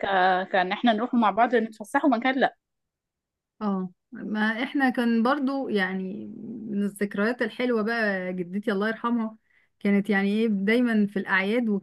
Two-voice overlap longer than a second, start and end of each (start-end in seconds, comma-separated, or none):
none